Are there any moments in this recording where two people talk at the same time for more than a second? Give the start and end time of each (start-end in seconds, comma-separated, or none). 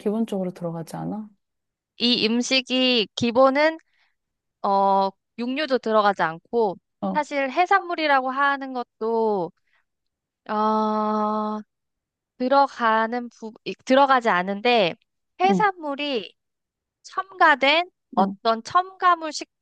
none